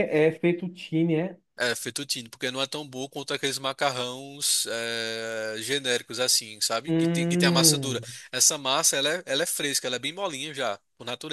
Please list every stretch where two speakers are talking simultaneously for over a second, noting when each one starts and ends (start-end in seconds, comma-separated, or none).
6.9-8.1